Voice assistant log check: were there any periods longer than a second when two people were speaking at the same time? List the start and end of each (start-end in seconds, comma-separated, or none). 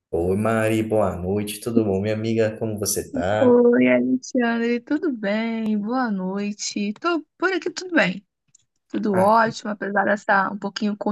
none